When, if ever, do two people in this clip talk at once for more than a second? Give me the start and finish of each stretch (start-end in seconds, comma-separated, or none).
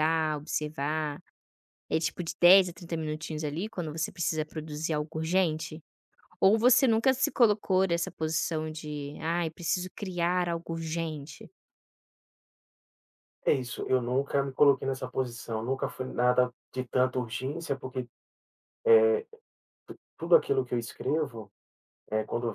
none